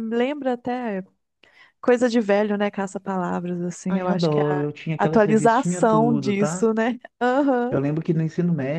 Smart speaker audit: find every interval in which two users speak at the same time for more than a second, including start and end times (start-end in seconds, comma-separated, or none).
3.9-6.7